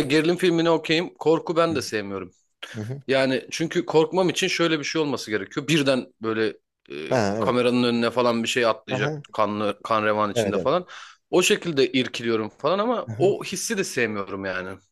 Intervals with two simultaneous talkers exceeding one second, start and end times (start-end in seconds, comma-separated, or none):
none